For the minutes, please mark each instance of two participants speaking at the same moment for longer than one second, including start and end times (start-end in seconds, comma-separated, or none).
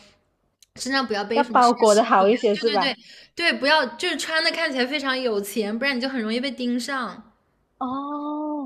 1.3-2.9